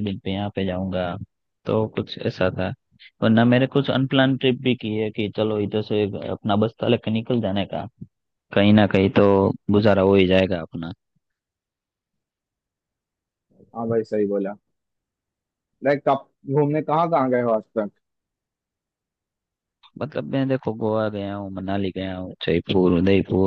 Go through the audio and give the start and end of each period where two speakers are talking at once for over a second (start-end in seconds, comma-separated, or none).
none